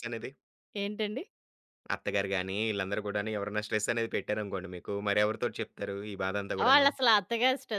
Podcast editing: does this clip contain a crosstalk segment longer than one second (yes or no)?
no